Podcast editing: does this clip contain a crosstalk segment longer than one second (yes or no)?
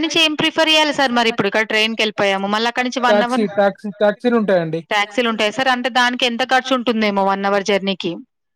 yes